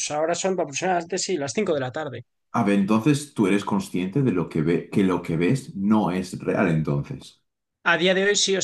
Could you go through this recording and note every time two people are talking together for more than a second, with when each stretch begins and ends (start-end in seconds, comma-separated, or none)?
none